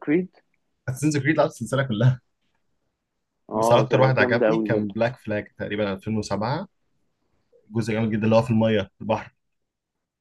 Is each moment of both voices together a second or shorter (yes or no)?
no